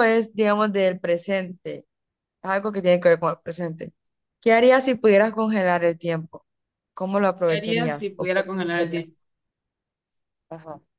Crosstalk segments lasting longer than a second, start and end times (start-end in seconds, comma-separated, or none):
7.5-9.1